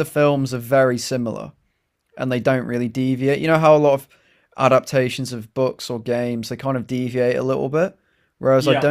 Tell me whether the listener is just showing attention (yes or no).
yes